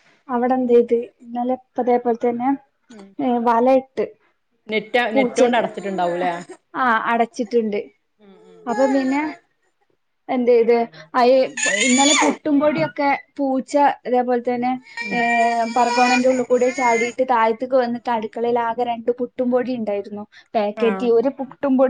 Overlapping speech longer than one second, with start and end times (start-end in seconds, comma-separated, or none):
none